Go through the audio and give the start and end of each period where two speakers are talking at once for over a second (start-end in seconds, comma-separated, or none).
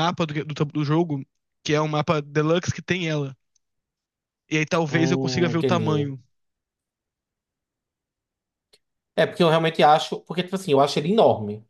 4.9-6.1